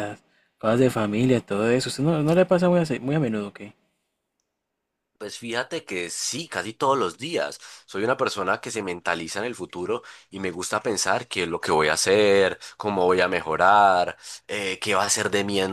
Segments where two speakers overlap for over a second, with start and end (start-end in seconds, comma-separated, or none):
none